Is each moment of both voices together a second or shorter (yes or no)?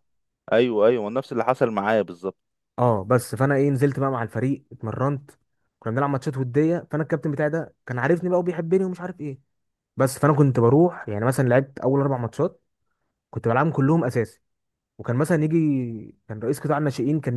yes